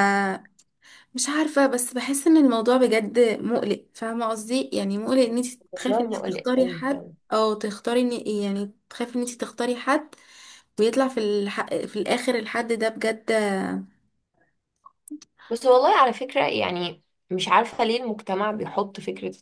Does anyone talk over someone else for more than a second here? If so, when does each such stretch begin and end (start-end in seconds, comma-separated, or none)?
5.7-7.1